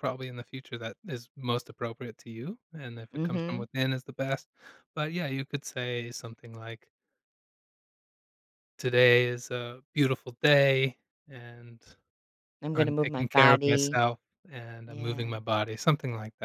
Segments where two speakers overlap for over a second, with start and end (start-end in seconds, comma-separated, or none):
12.7-14.0